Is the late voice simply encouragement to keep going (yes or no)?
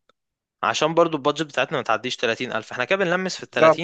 no